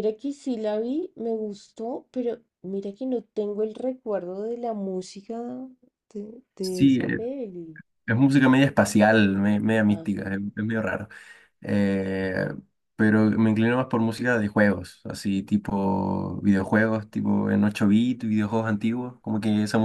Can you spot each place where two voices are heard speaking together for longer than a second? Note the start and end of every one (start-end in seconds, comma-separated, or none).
none